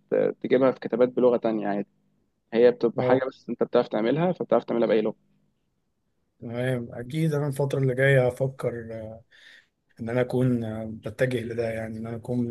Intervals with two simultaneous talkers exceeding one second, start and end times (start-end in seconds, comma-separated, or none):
none